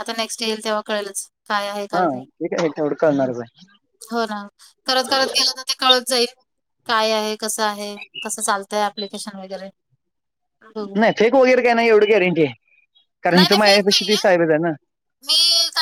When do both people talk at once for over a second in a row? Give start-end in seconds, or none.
none